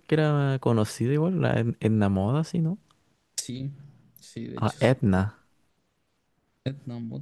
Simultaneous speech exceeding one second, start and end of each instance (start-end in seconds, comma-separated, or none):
none